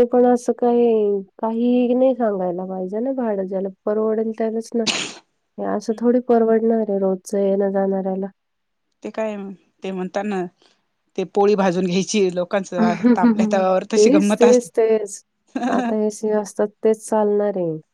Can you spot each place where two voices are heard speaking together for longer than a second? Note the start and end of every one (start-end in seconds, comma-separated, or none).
none